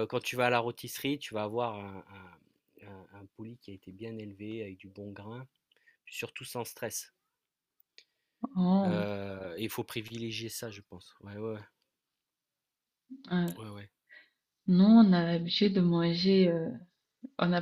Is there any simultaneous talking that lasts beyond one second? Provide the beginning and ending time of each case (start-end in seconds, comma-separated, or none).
none